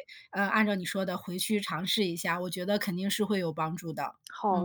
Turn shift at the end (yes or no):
yes